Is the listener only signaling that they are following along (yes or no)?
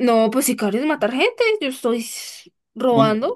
no